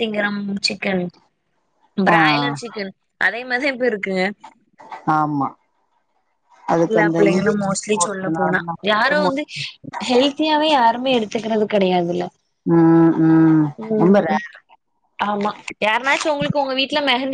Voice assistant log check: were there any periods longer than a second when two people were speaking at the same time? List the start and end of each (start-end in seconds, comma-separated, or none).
6.9-9.3